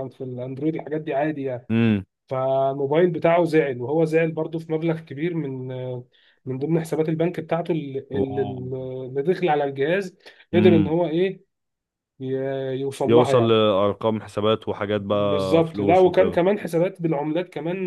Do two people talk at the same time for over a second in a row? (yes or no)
yes